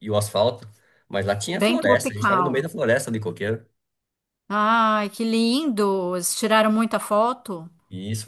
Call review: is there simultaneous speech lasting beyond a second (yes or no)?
yes